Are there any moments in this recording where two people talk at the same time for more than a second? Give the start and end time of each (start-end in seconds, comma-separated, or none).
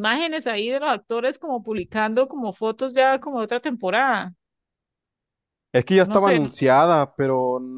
none